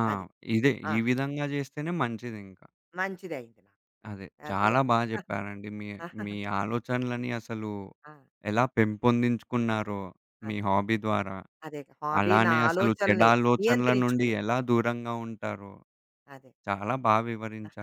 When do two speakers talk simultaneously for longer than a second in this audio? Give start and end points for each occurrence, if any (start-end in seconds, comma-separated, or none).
12.2-14.3